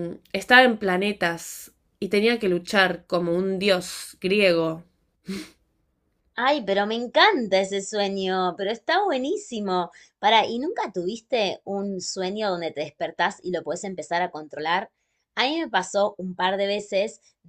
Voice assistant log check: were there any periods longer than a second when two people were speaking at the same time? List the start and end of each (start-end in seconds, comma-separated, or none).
none